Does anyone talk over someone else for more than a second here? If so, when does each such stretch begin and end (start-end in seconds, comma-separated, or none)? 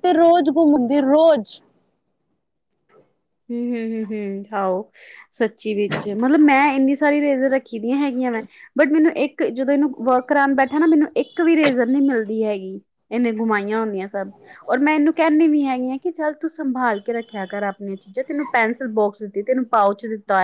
none